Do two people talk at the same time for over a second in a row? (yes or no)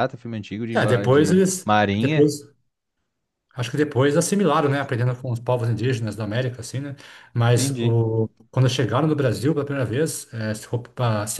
yes